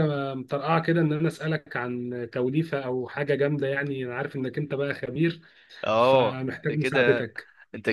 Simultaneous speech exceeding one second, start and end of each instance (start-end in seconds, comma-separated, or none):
6.0-7.3